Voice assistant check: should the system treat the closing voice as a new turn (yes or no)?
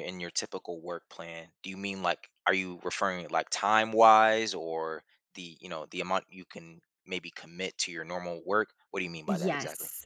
yes